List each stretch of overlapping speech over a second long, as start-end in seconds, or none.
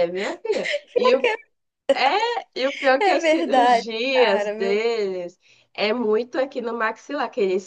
3.0-4.8